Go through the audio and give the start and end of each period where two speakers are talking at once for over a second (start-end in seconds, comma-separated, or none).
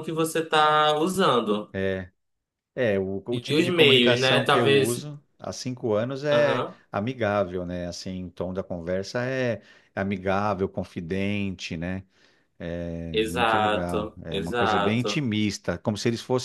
3.3-5.0, 13.1-15.2